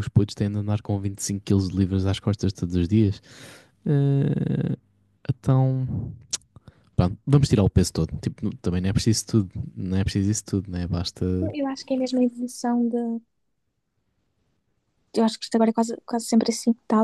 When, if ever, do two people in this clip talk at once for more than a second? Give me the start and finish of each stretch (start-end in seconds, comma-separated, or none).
none